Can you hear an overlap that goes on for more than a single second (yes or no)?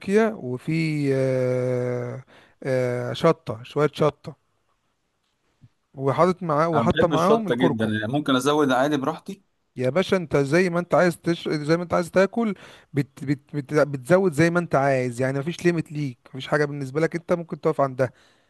yes